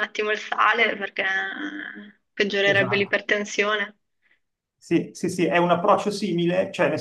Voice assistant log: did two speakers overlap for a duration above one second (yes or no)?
no